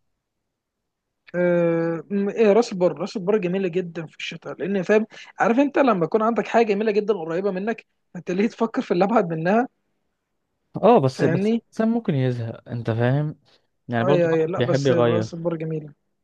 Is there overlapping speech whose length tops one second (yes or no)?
yes